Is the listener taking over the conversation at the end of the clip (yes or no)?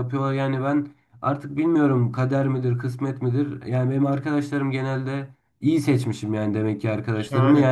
no